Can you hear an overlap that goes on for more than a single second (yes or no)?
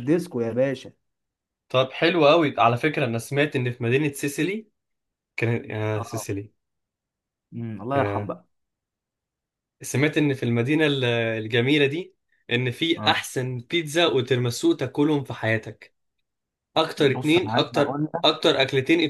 yes